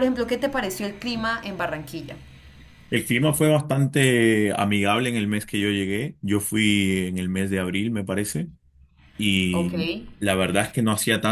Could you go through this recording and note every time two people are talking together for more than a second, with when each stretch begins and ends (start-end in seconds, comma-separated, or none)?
none